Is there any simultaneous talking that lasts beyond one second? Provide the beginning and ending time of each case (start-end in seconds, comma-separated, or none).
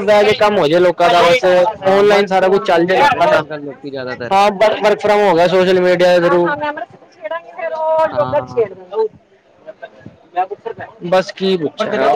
1.8-3.4